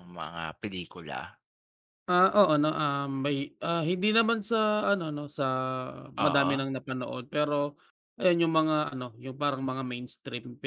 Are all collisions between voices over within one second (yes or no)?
yes